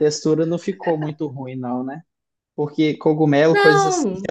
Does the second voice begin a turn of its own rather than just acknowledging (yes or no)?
no